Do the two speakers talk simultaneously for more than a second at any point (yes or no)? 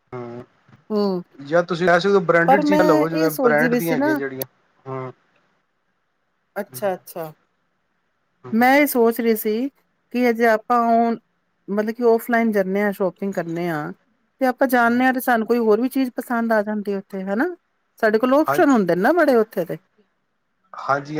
yes